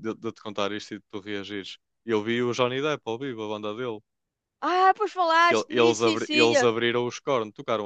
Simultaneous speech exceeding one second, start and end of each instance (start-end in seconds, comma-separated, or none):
5.5-6.7